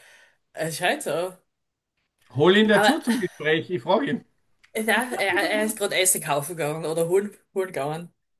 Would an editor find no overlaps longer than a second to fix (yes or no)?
yes